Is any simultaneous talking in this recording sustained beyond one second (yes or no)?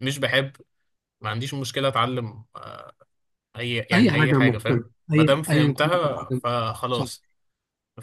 yes